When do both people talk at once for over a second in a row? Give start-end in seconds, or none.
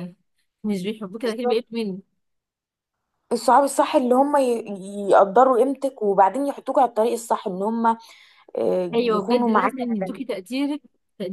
8.9-10.2